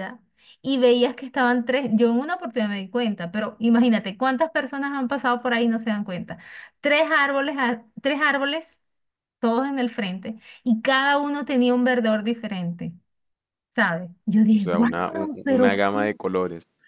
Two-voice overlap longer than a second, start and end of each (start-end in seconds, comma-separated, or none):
14.5-16.1